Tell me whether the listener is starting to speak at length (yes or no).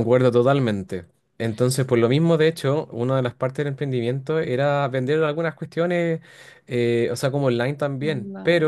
no